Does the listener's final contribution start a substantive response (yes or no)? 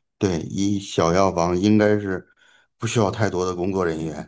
yes